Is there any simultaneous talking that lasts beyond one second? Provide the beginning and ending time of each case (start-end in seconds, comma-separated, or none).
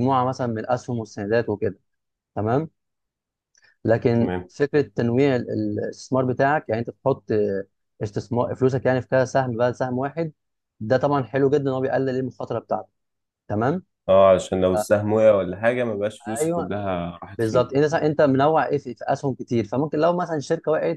none